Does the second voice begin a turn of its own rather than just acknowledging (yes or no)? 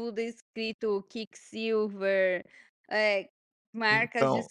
yes